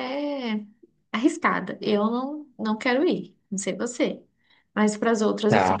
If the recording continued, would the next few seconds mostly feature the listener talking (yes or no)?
yes